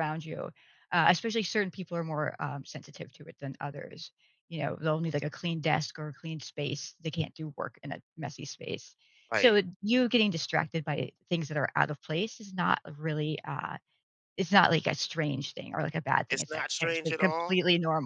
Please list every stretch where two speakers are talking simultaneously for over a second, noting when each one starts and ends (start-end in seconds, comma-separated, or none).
16.3-17.6